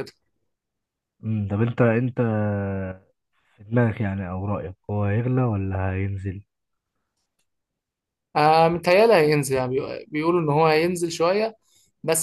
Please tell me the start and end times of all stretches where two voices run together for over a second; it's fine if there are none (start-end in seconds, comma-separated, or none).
none